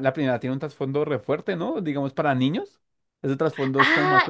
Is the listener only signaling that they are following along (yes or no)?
no